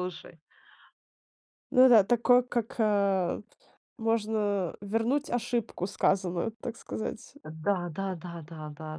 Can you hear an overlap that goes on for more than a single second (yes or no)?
no